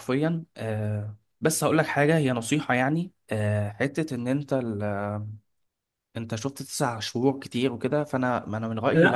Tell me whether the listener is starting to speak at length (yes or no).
yes